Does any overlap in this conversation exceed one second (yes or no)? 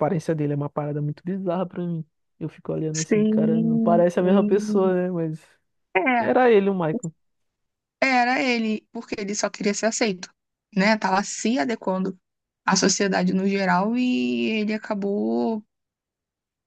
yes